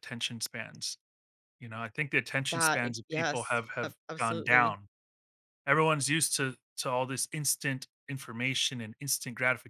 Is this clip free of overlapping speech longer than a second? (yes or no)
no